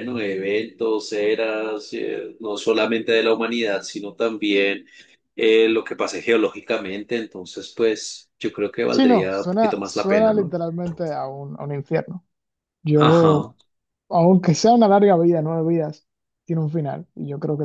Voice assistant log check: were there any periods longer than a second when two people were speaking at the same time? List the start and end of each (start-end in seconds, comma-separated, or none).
8.9-10.6